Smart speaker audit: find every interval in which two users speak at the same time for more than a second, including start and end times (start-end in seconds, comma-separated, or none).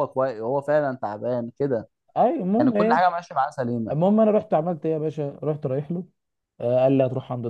none